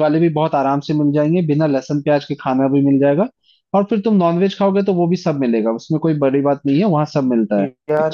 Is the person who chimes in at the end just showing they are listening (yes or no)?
no